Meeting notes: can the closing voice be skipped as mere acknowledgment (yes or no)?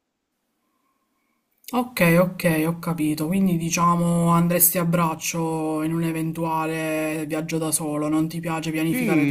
no